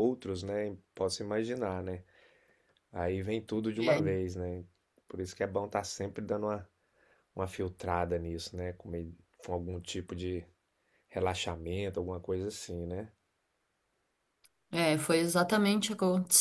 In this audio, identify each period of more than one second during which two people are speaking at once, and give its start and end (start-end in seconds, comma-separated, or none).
none